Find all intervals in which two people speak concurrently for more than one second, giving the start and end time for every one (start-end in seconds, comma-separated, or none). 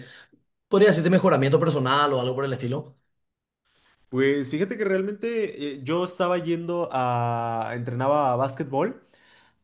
none